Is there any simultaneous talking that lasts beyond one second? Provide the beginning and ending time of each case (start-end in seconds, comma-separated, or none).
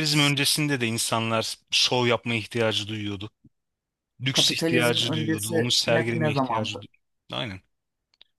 4.3-6.8